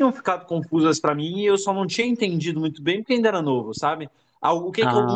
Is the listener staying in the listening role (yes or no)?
yes